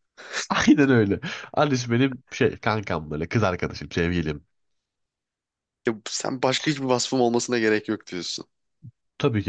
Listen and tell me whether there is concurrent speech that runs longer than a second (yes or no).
no